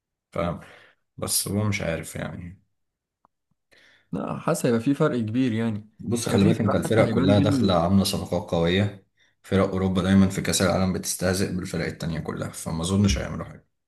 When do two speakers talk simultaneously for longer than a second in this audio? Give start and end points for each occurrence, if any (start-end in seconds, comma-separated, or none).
6.3-7.8